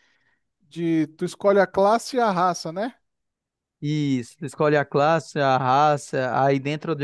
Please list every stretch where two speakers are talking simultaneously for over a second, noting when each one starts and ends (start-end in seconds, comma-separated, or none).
none